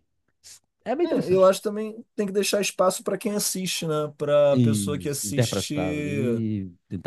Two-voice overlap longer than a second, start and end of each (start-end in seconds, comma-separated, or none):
4.6-6.4